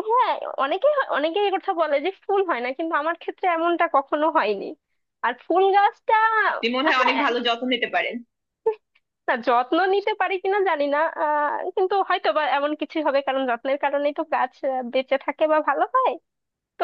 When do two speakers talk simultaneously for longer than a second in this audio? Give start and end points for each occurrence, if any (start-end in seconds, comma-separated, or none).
none